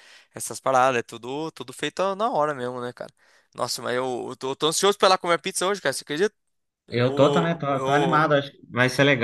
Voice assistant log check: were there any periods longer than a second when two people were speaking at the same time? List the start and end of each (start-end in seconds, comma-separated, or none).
6.9-8.3